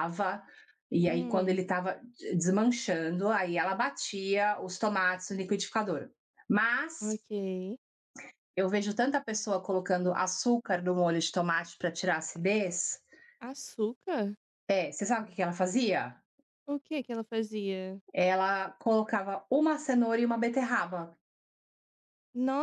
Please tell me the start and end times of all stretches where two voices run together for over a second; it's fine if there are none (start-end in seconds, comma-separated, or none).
none